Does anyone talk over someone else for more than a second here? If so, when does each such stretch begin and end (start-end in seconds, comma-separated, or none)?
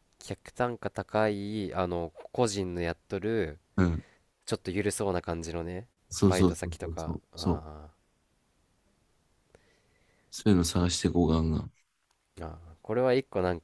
6.1-7.6